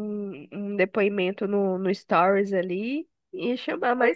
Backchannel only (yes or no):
yes